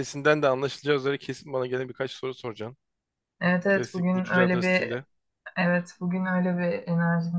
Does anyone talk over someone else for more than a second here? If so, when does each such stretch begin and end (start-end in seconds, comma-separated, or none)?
3.7-5.0